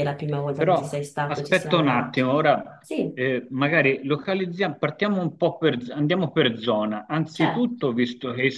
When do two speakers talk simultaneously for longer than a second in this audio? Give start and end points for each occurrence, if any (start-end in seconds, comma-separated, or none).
0.6-2.2